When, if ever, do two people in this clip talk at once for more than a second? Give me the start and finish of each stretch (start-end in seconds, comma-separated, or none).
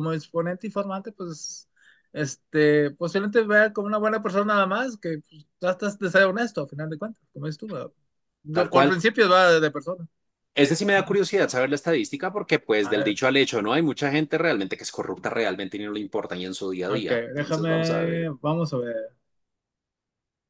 16.9-18.3